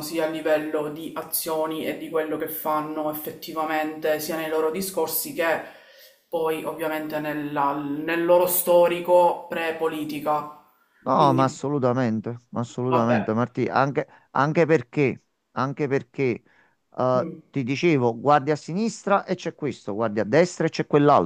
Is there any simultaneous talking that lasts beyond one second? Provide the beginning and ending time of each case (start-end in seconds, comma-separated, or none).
none